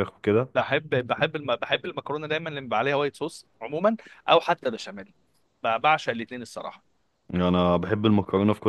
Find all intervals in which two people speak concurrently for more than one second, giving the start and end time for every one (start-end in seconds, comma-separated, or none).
none